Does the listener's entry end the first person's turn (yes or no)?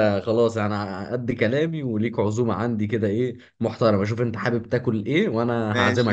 yes